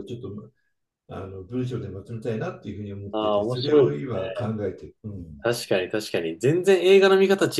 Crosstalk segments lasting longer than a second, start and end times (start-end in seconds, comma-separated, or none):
3.1-4.5